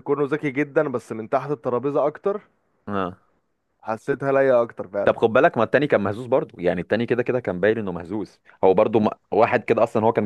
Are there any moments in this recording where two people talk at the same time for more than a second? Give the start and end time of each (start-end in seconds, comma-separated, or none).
none